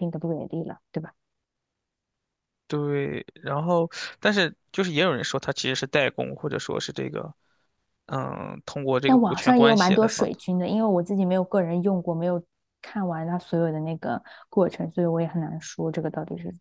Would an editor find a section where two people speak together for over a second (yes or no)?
yes